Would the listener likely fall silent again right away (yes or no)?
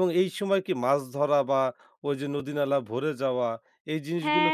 no